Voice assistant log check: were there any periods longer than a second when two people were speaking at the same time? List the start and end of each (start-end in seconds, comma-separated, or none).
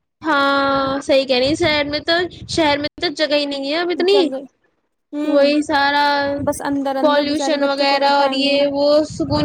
7.0-8.5